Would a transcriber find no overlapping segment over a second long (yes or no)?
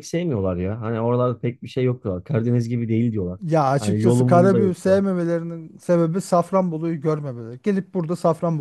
no